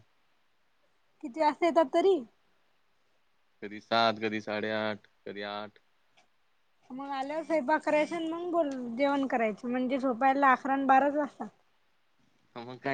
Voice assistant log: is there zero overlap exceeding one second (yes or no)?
yes